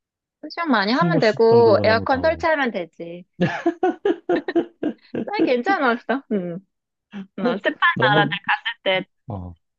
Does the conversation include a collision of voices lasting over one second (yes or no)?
yes